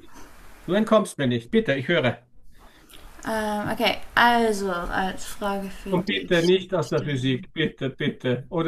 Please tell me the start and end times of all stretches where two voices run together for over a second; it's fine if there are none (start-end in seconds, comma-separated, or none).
5.9-7.5